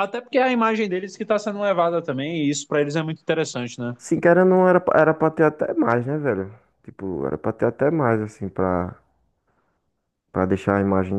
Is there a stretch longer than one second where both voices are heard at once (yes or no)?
no